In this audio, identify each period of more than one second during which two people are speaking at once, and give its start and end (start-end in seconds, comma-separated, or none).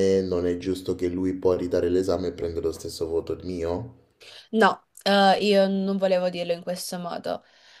none